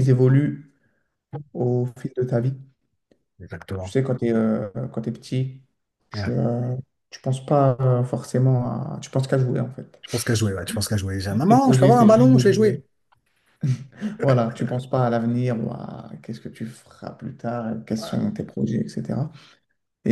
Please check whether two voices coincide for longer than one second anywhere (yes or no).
yes